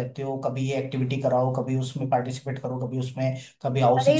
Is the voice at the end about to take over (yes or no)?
yes